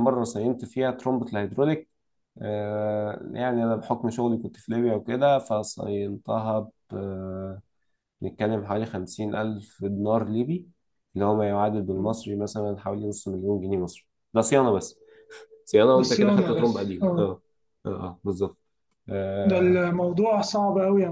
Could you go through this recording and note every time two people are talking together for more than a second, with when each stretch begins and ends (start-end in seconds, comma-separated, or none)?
15.9-17.3